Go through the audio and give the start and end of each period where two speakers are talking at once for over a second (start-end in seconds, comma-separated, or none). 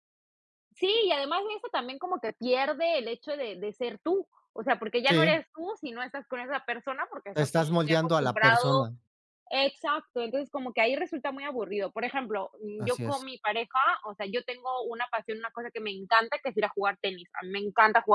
7.3-8.7